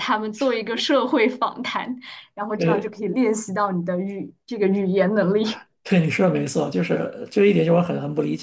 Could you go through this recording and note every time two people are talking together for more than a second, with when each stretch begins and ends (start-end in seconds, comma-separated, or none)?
none